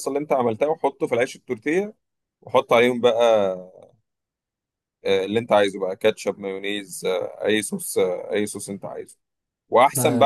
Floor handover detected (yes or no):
no